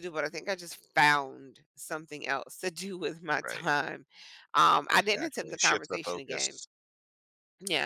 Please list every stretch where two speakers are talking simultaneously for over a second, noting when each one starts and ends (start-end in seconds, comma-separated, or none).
5.0-6.6